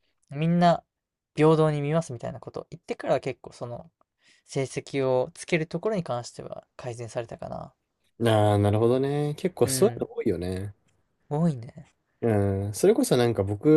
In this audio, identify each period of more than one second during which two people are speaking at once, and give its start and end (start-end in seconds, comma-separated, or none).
none